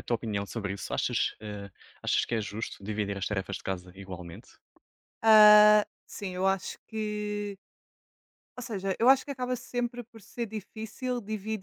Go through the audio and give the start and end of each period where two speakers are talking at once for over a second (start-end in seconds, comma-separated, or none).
none